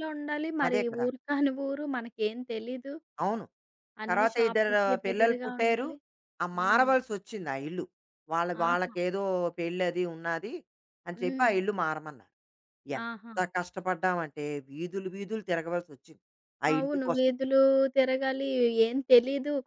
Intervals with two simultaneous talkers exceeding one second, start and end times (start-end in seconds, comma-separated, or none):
4.1-5.8